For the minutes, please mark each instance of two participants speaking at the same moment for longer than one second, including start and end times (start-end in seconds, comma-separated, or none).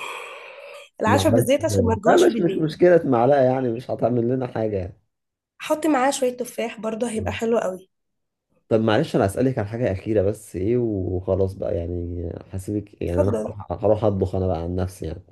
1.1-2.7